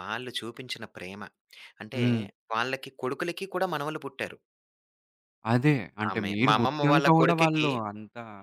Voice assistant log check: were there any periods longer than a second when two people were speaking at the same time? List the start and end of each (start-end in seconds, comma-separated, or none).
6.1-7.7